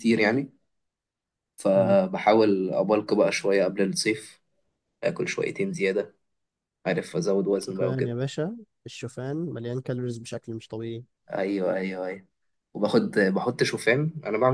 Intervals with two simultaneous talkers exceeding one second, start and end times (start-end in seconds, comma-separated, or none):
none